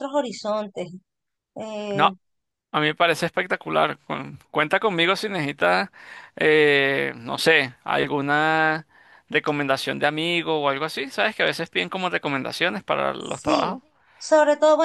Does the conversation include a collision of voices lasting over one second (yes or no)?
no